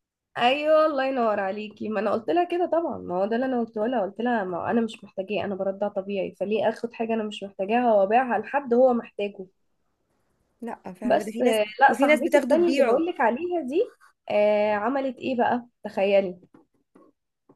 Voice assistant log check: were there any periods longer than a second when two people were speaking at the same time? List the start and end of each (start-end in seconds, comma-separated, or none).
11.0-13.0